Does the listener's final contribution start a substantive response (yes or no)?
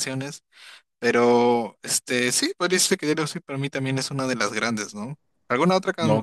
no